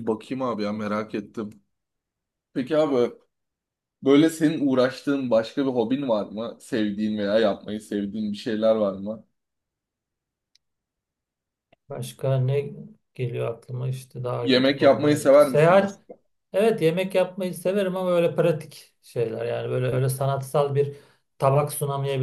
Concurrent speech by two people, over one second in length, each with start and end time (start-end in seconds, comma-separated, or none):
14.4-16.0